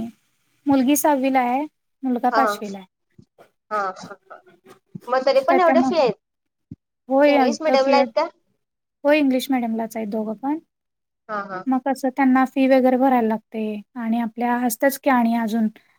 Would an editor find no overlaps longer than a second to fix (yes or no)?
yes